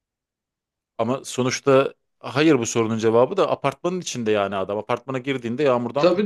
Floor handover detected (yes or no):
yes